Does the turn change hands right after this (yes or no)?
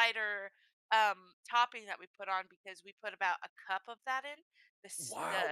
yes